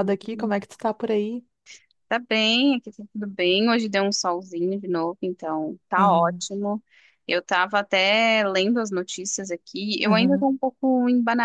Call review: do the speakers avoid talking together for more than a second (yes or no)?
yes